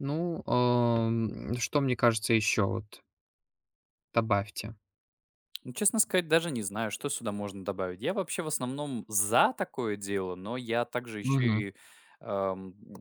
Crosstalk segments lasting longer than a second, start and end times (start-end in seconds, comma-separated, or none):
none